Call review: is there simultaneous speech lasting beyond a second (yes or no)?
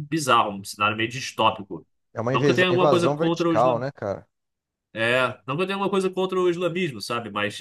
yes